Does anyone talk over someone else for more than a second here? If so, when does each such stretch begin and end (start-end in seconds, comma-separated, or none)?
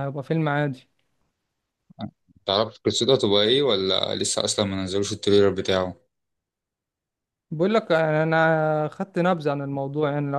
none